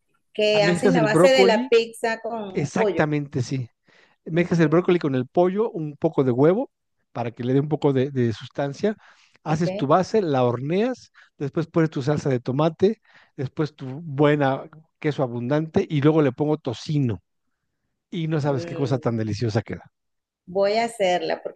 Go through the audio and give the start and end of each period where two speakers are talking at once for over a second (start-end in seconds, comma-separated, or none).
0.5-1.7